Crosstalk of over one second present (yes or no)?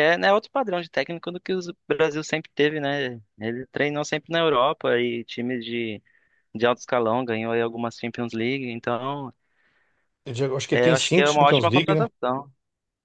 yes